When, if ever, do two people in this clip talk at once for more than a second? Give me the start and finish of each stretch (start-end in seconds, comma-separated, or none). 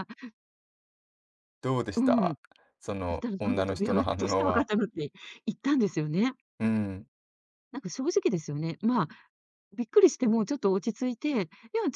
3.1-4.7